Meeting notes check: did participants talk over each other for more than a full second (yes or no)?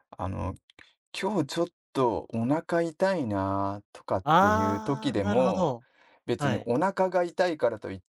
yes